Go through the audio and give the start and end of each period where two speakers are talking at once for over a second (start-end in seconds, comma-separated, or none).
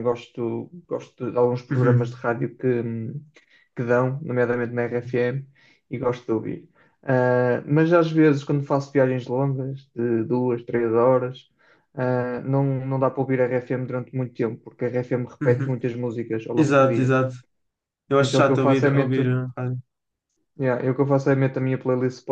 18.2-19.4